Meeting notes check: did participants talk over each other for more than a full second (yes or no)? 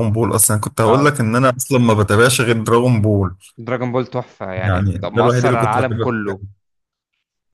yes